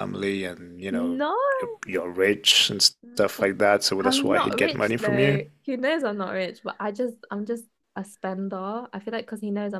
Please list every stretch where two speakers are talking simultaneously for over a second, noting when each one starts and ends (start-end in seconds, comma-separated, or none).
4.0-5.4